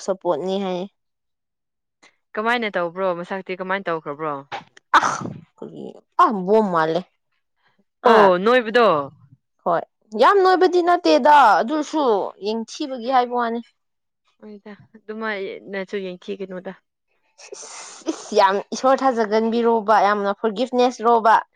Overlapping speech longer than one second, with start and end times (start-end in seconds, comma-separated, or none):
none